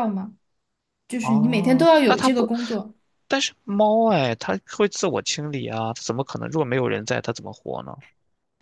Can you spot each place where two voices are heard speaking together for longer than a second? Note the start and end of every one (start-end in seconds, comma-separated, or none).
1.2-2.5